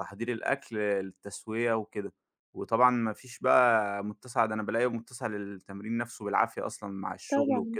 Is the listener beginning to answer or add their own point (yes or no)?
no